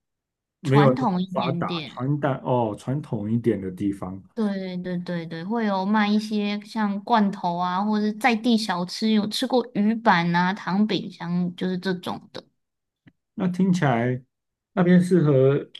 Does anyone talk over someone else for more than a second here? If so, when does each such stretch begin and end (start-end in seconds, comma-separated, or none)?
0.6-2.1